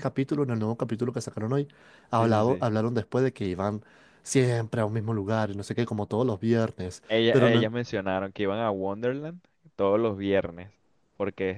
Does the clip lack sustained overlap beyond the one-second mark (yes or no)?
yes